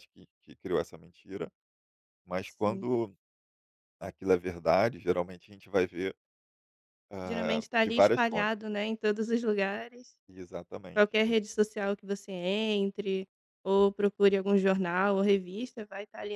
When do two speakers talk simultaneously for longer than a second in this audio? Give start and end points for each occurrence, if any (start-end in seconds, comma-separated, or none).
7.2-8.6